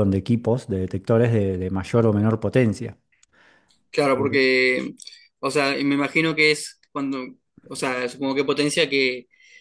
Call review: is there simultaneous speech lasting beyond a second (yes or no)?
no